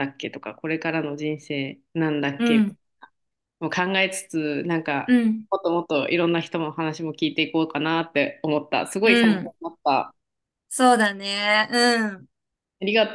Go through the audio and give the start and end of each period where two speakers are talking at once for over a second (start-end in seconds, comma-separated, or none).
none